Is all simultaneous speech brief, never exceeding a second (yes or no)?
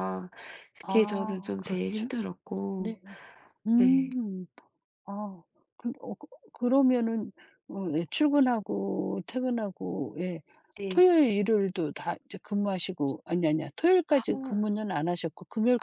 no